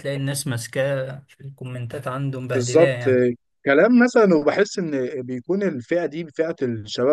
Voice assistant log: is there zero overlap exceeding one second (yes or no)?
yes